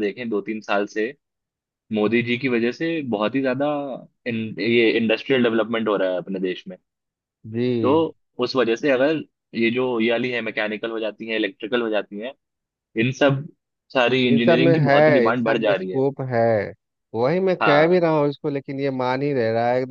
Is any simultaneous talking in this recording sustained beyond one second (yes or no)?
yes